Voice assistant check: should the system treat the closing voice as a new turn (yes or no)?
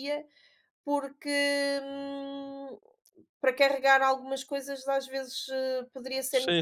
yes